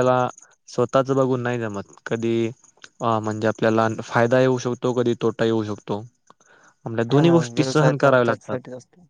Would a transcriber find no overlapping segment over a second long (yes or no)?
no